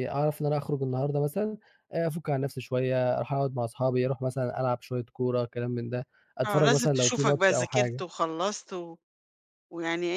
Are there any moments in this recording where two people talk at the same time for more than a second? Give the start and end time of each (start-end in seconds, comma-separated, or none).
6.5-8.0